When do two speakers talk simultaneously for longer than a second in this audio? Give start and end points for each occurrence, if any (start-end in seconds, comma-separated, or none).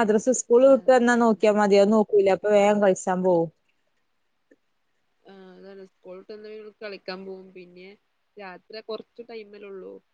none